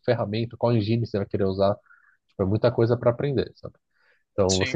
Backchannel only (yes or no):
yes